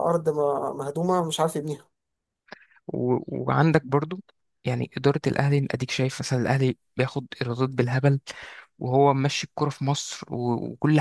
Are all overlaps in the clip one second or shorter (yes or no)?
yes